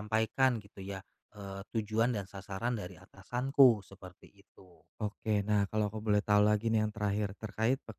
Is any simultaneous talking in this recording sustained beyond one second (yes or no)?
no